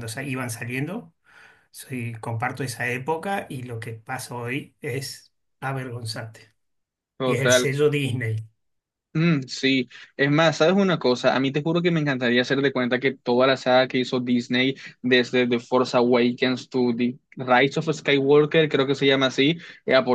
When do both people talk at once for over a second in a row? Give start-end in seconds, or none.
none